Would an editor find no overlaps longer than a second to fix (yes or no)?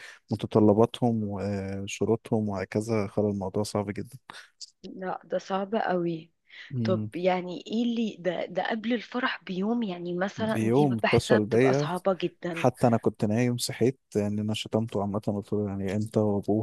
no